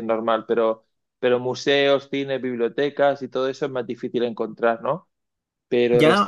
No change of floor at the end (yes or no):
no